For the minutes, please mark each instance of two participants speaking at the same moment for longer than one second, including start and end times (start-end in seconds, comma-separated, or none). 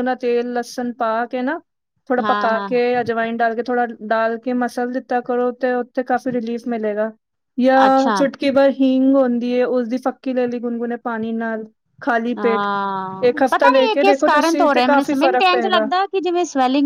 13.3-15.8